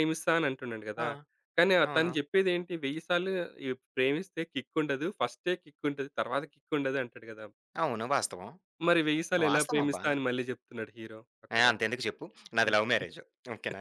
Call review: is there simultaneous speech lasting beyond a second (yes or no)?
no